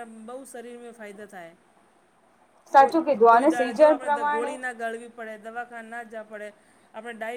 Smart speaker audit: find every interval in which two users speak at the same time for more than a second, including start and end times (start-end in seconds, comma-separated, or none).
2.8-4.5